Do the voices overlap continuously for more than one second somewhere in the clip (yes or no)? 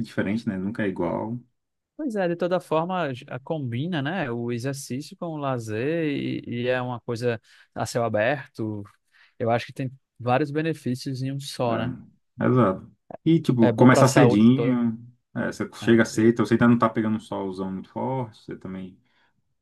yes